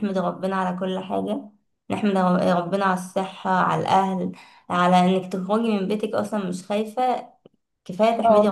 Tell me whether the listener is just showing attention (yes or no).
no